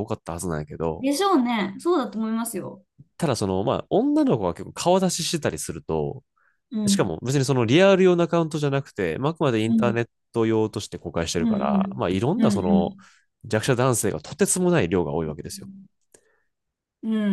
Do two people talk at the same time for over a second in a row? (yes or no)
yes